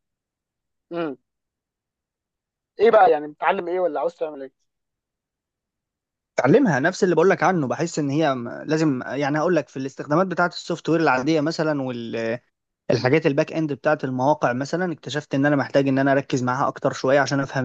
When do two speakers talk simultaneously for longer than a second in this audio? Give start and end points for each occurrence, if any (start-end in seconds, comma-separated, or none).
none